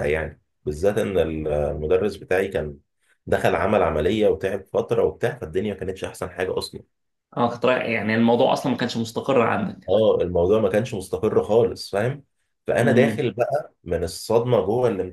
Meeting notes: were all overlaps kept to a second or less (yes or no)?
yes